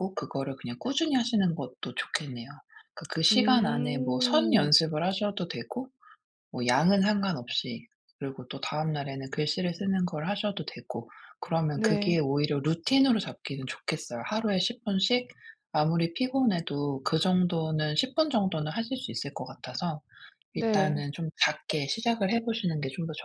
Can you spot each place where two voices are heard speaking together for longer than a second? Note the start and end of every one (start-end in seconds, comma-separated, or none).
3.3-4.7